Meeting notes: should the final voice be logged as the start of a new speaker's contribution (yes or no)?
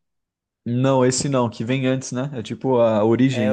yes